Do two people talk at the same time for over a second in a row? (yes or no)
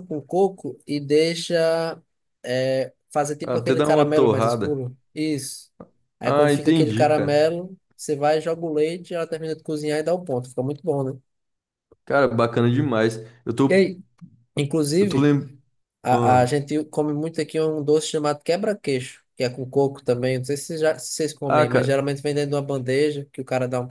yes